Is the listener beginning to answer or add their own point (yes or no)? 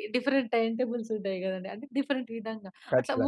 no